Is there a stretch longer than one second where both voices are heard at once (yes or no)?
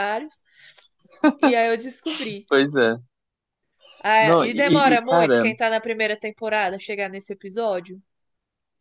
yes